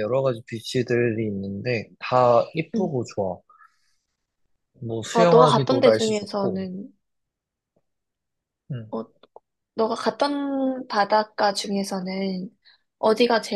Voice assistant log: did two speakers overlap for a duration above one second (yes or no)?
yes